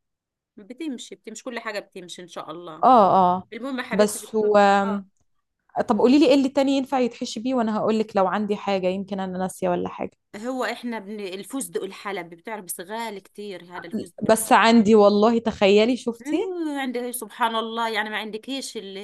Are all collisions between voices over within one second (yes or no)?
yes